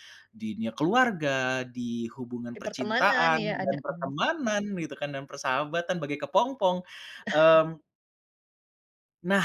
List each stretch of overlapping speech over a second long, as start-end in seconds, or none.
2.5-4.1